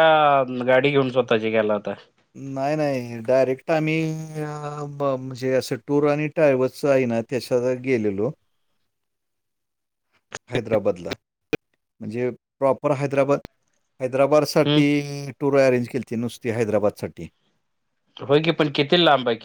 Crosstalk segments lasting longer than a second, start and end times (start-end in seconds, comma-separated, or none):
none